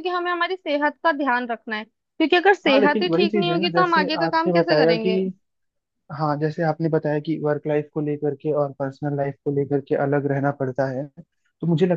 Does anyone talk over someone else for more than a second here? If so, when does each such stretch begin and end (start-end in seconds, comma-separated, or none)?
2.7-5.1